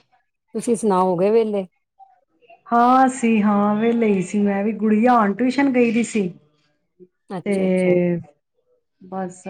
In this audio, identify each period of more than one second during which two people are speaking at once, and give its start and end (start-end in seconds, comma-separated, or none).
none